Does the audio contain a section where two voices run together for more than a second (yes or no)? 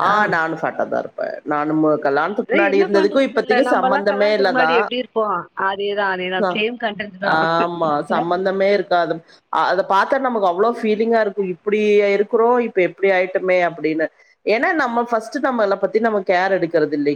yes